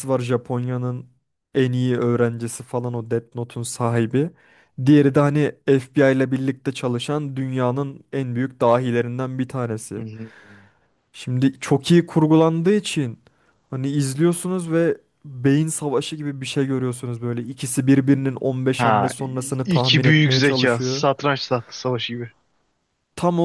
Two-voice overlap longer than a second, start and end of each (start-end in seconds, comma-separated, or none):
18.8-21.1